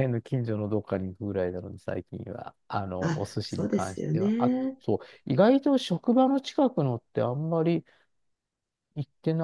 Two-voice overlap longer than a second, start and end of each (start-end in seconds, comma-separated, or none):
3.0-4.8